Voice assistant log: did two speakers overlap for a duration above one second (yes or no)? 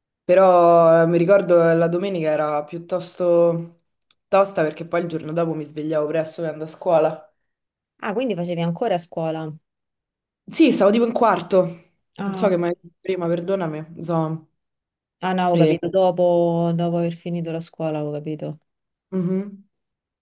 no